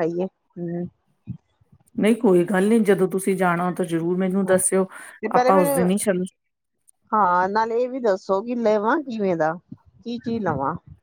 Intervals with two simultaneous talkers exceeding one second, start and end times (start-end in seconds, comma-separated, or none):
none